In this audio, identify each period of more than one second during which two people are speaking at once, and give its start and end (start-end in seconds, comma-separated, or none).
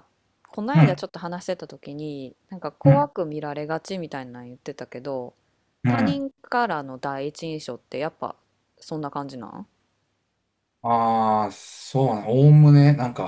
none